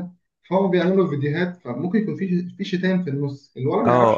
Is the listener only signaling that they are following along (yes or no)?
no